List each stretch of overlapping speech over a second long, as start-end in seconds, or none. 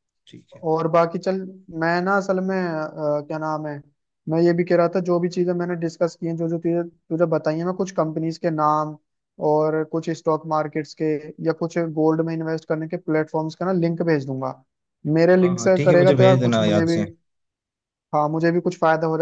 15.4-17.0